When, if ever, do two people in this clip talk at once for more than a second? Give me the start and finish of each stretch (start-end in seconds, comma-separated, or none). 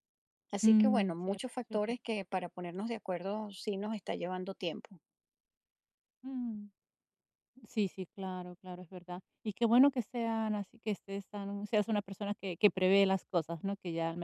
0.6-1.9